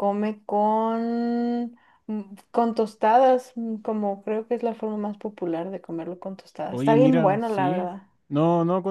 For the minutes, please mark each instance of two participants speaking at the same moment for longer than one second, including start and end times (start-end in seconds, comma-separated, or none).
6.7-7.9